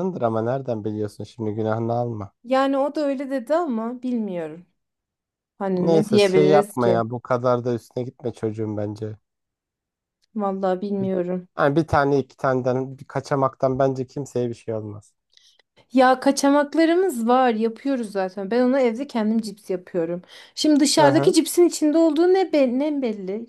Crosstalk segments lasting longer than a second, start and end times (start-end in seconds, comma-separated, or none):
5.8-7.0